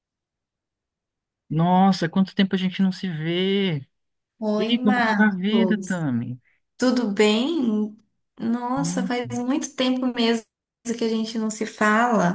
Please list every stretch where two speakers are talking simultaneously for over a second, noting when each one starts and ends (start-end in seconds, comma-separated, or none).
4.6-6.0